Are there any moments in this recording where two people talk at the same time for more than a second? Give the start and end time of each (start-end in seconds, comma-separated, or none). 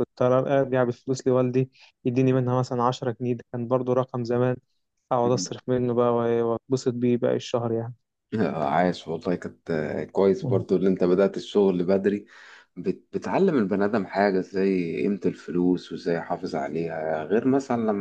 none